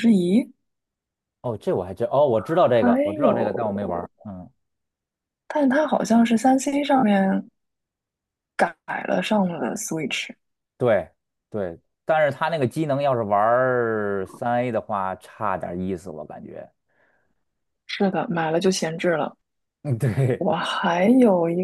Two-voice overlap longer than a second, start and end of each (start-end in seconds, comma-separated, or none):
2.8-4.1